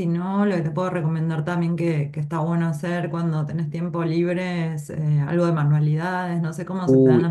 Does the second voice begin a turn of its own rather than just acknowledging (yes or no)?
yes